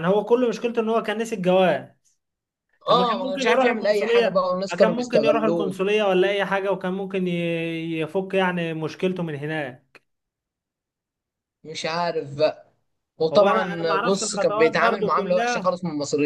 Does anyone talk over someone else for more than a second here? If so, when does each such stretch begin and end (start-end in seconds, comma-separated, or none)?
2.9-5.8, 13.3-15.8